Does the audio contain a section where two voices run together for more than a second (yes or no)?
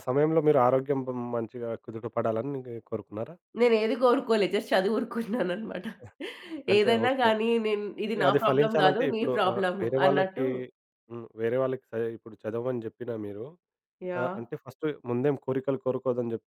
yes